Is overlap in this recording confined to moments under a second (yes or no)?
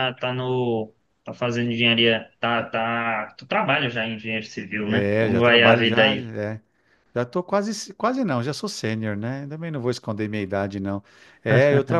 no